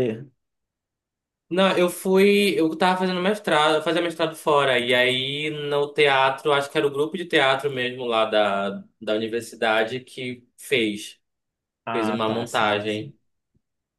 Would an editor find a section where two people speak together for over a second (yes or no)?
yes